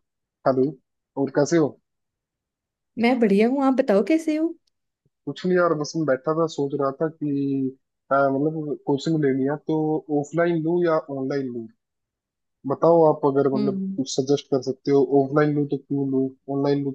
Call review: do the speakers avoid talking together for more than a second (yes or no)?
yes